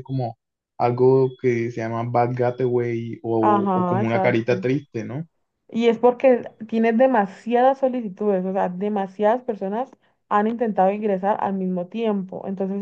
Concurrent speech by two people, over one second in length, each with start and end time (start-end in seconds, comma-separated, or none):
3.4-4.7